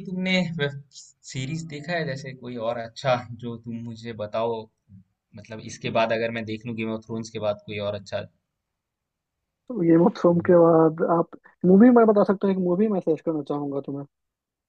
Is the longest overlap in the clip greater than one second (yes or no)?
no